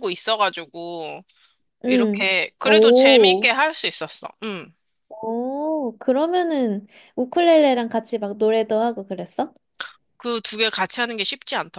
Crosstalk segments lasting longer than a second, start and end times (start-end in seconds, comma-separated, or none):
1.9-3.5